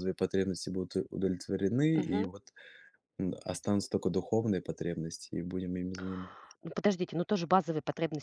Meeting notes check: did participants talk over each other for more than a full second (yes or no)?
no